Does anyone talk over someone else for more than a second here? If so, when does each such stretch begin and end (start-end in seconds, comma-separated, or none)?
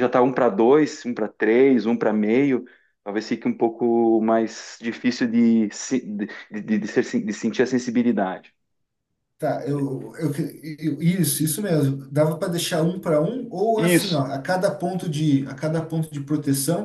none